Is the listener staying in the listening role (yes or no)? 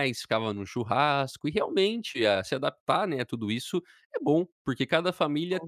yes